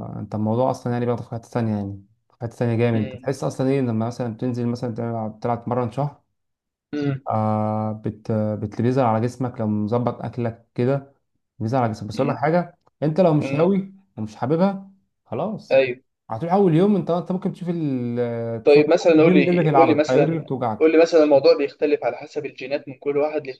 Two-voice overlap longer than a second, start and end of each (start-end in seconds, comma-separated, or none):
18.6-20.9